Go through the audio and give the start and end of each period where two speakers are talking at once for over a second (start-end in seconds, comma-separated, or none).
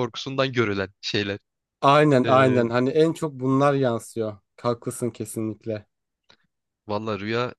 none